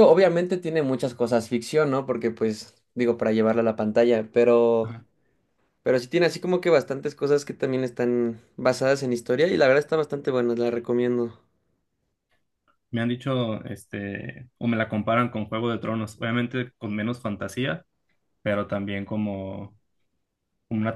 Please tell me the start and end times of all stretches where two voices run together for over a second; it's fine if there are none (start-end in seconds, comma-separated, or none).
none